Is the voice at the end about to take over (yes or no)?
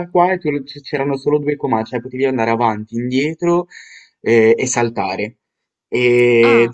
no